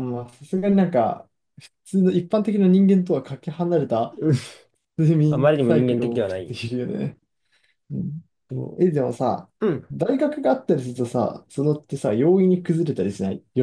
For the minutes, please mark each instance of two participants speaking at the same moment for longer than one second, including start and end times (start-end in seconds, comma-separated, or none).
5.3-6.6